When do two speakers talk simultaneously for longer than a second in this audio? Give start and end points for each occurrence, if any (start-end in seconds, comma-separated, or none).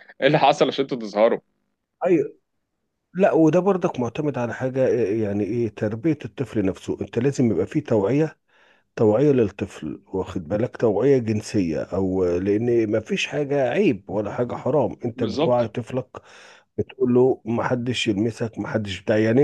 none